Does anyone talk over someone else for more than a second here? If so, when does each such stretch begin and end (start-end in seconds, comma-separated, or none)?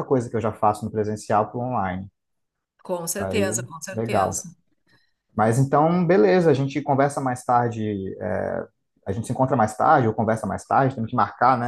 3.1-4.4